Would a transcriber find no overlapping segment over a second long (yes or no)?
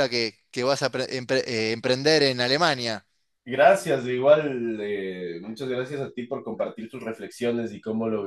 yes